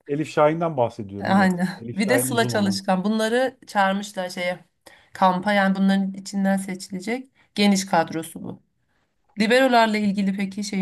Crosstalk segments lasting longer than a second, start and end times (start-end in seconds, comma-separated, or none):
1.2-2.8